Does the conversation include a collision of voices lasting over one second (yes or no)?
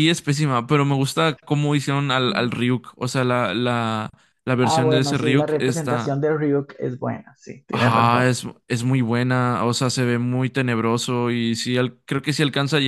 yes